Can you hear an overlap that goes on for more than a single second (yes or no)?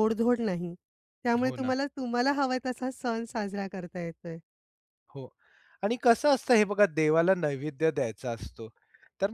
no